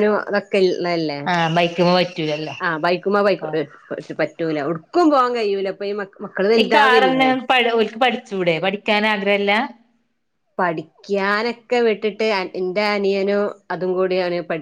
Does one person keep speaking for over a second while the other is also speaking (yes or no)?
no